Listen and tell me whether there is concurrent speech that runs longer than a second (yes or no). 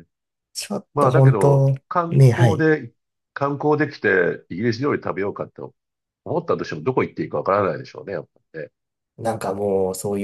yes